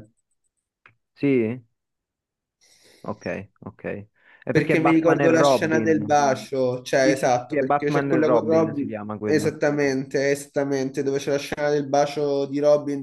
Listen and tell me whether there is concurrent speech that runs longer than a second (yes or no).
yes